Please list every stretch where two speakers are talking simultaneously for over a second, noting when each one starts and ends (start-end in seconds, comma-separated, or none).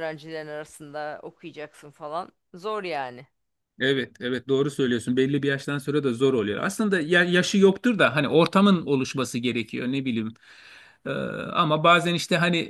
none